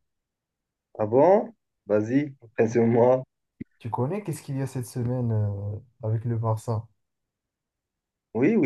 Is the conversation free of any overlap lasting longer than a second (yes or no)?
yes